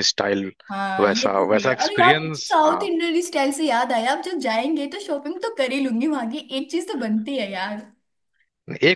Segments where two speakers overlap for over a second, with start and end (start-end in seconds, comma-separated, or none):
1.0-2.9